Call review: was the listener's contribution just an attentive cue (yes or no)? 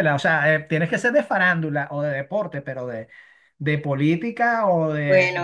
no